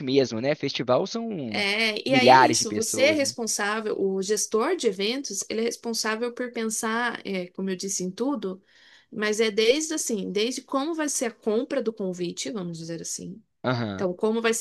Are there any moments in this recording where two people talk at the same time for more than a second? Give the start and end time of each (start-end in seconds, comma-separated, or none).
2.1-3.3